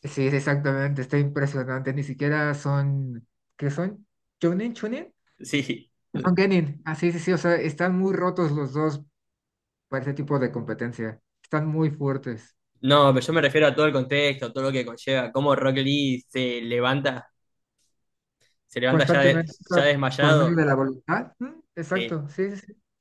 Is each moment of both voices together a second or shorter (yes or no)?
no